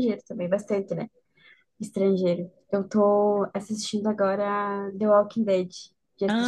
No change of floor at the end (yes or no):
no